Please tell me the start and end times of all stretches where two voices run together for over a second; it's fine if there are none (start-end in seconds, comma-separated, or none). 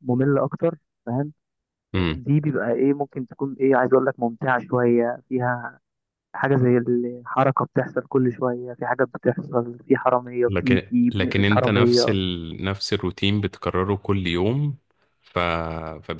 10.5-12.2